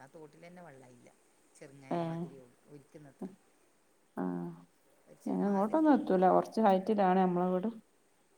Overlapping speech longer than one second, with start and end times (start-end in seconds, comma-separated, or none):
none